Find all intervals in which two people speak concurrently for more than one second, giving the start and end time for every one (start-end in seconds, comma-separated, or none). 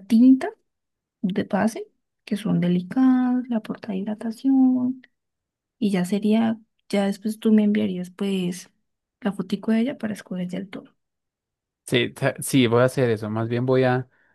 none